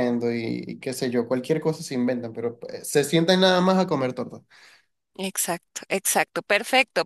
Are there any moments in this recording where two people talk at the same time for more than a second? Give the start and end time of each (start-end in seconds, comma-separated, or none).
none